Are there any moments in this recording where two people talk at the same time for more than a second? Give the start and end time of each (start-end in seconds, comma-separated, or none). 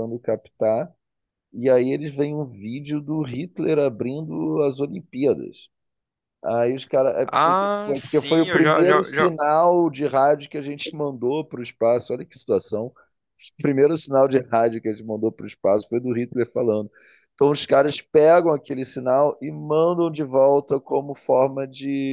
7.2-9.3